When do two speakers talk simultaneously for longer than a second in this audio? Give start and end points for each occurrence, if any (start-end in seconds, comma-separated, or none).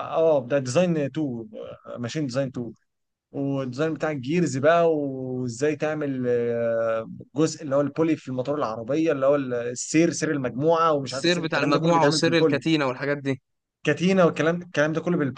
11.1-12.6